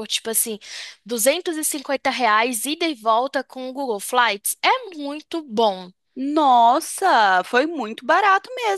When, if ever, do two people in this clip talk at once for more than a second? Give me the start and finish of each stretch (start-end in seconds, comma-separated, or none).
none